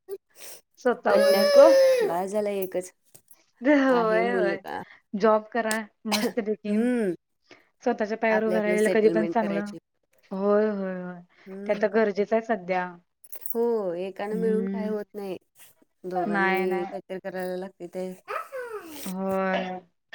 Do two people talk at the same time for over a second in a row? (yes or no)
yes